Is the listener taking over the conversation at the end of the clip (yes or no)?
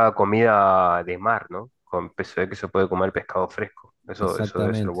yes